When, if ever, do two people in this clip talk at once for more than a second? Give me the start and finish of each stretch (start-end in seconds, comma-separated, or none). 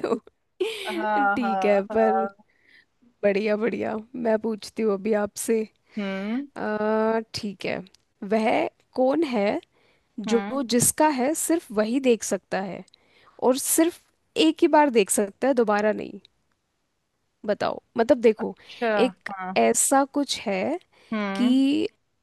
0.9-2.2